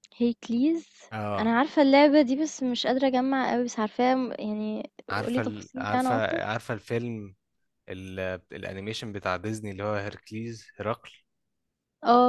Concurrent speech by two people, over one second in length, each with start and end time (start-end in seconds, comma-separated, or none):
5.1-6.4